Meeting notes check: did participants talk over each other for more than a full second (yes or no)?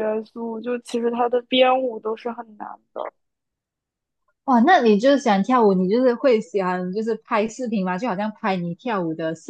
no